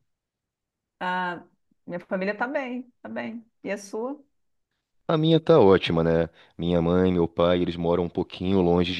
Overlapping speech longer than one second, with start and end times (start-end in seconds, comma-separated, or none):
none